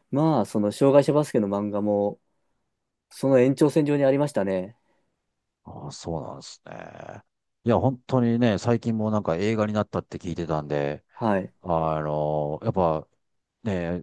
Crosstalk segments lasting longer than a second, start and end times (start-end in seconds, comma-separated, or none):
none